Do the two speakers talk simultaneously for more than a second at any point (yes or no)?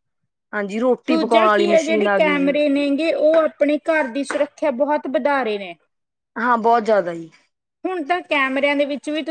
yes